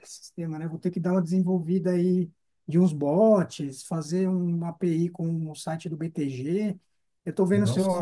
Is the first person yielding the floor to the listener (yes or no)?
no